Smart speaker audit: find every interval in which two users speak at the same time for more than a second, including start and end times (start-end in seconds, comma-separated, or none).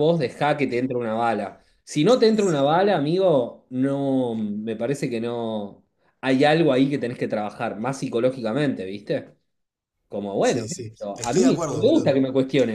10.4-12.2